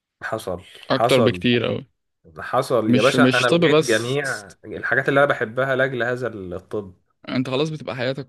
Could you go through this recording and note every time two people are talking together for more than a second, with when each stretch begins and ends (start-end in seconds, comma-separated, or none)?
2.9-4.2